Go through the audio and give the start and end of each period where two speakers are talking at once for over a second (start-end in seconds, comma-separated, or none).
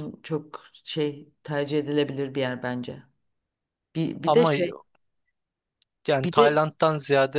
none